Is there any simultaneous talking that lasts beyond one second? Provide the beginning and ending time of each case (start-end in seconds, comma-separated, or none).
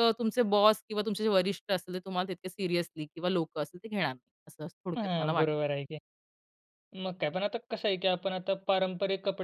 none